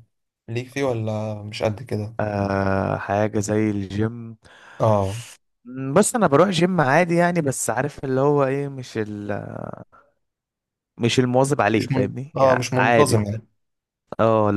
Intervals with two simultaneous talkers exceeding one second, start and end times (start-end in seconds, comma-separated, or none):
11.8-13.2